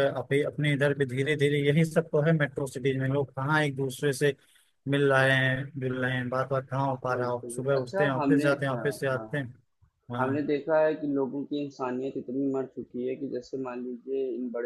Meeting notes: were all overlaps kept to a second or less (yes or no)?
no